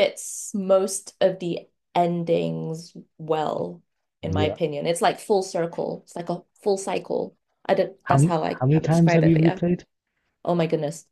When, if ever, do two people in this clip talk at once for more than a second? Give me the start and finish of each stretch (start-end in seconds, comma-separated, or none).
8.0-9.6